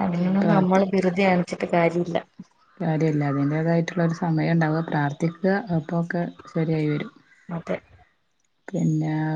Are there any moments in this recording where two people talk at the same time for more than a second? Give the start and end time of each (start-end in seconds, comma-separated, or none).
none